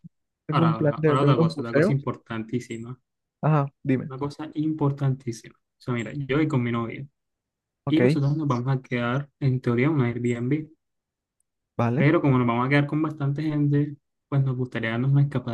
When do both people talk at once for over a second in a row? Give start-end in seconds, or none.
0.5-1.9